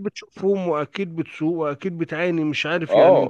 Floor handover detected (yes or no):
yes